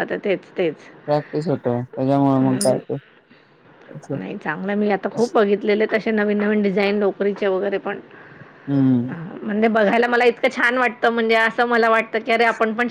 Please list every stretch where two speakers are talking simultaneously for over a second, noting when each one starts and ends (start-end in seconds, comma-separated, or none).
none